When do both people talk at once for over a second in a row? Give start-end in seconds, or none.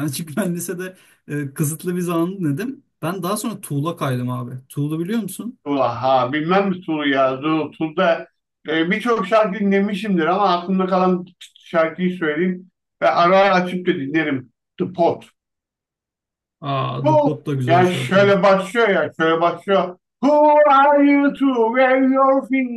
17.0-18.4